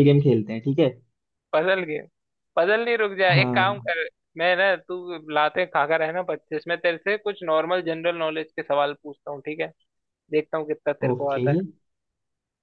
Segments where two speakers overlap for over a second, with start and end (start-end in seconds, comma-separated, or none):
none